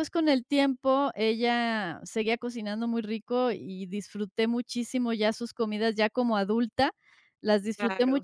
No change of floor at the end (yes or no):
yes